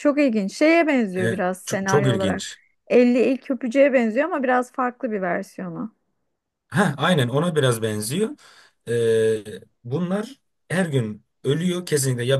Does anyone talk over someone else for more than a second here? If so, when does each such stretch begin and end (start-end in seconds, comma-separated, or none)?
1.2-2.4